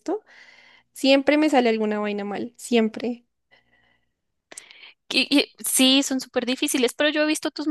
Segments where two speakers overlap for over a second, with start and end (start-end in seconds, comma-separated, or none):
none